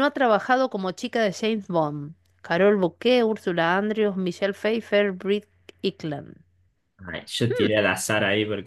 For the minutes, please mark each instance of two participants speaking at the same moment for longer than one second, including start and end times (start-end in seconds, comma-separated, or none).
none